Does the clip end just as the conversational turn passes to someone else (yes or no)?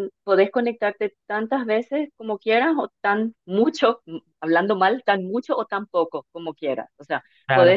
no